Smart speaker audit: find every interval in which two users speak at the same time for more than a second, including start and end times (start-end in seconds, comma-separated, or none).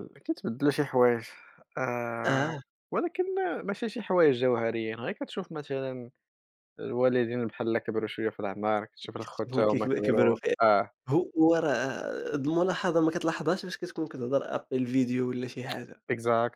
9.2-10.6